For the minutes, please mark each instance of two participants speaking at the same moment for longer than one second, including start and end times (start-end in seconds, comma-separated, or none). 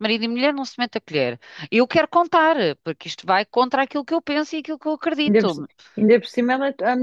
none